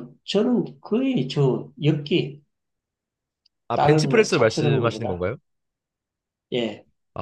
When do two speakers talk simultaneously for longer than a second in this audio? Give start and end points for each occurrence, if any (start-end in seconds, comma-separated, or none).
3.7-5.2